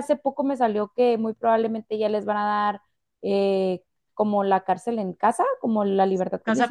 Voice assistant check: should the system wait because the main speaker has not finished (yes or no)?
no